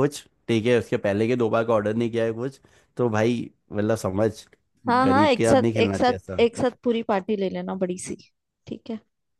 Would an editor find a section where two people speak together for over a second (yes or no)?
yes